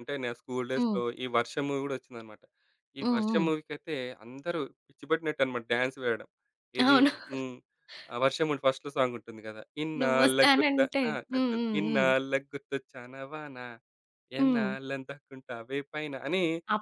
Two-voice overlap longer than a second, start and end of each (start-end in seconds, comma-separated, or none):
10.0-12.1